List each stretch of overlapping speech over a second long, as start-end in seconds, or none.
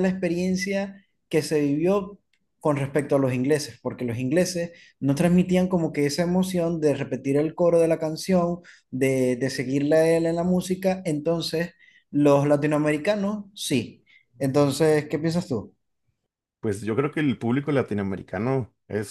none